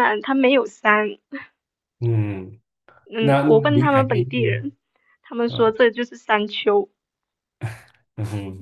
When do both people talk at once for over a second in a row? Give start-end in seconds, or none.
3.2-4.7